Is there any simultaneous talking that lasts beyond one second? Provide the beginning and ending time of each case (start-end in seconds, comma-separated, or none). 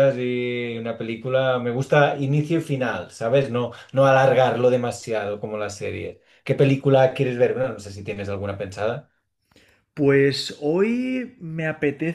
none